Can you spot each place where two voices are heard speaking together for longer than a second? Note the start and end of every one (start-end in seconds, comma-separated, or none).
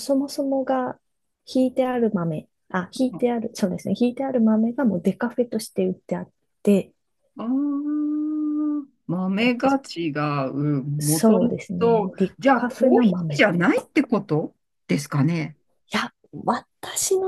11.0-13.6